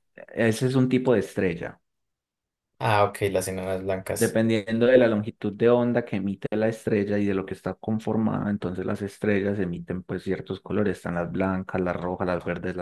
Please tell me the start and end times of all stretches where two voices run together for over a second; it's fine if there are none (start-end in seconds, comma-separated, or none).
none